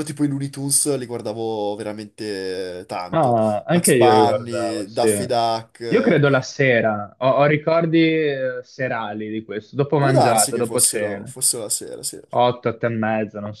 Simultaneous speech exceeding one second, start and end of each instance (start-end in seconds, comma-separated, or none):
3.1-5.1, 10.0-11.3